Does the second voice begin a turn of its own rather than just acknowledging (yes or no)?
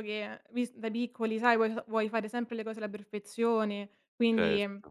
no